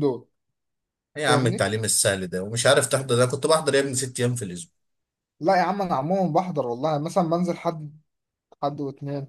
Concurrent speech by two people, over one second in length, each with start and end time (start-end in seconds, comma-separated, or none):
none